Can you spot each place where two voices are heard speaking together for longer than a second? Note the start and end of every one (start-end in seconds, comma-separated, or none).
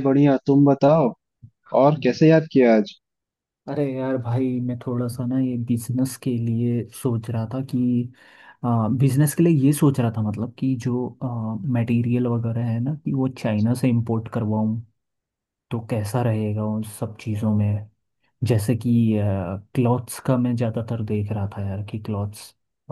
none